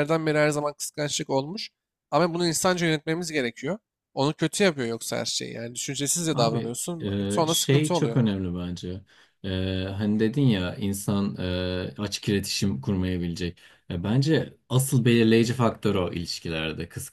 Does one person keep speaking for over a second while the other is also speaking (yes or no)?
yes